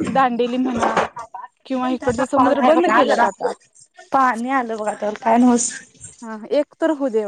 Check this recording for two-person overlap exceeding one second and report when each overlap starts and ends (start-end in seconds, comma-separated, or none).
1.7-3.3